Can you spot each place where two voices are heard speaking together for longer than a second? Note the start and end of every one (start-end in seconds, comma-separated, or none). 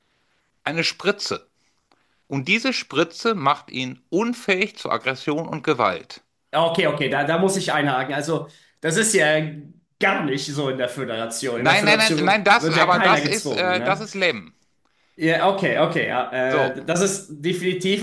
11.6-14.0